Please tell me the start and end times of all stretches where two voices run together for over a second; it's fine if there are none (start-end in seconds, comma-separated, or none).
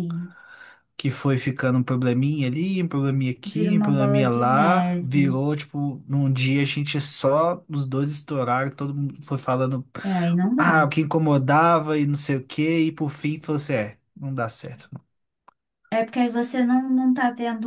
3.5-5.4